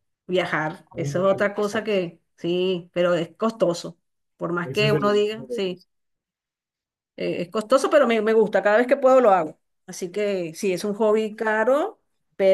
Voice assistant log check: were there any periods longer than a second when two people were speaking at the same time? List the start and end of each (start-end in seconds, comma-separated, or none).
4.6-5.8